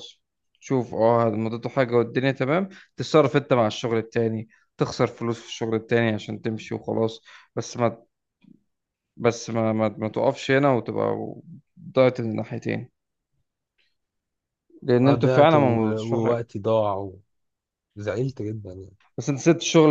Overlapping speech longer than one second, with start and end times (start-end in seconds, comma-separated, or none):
15.1-16.4